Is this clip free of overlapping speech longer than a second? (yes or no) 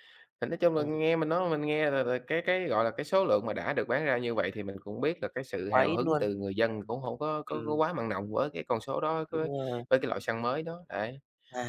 yes